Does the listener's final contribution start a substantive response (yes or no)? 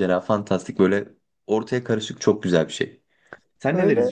yes